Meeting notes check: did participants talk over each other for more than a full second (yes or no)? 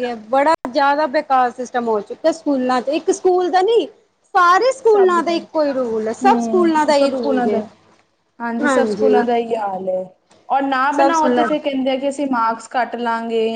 yes